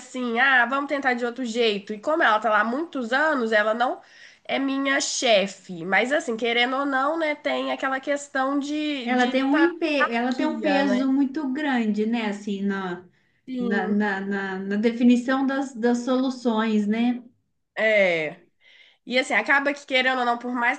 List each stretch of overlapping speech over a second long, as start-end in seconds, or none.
9.0-11.2